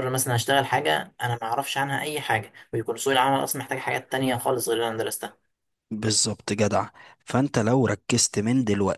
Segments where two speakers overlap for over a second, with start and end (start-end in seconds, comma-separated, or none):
none